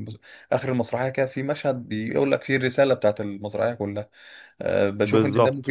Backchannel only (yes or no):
no